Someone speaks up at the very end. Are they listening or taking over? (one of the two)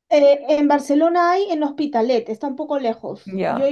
listening